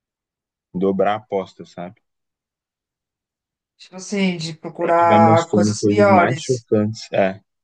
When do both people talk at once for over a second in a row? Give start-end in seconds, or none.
4.8-6.7